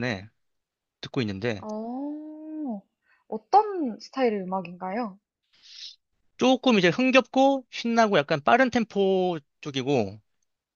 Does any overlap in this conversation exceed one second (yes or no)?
no